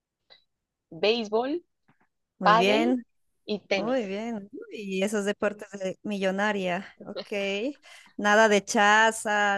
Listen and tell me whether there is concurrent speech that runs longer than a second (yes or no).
no